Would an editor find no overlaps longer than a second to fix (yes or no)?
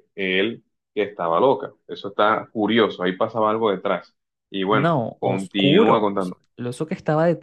no